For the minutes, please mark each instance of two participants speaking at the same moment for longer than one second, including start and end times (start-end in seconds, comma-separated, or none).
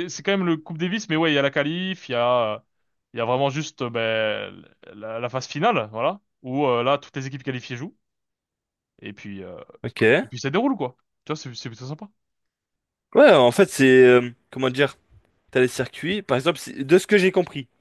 none